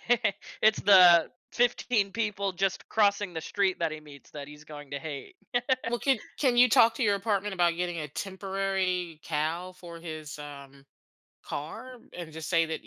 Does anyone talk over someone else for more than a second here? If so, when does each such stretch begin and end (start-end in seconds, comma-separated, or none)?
none